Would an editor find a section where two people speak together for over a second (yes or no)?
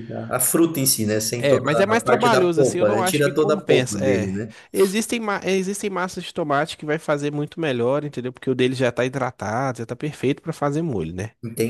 yes